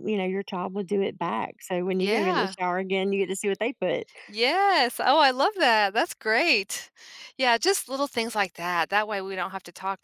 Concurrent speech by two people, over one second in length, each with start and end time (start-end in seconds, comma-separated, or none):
none